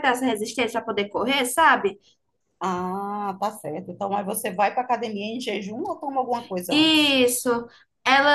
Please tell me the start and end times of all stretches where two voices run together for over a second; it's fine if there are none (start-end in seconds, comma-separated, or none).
none